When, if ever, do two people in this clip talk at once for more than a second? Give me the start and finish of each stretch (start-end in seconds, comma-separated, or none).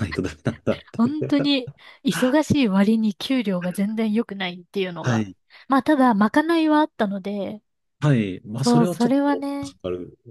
8.6-9.8